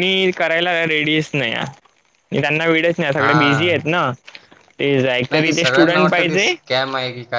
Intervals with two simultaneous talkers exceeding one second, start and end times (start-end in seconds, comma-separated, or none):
5.3-6.5